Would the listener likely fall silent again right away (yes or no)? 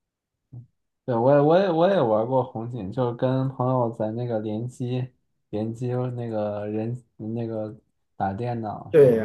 no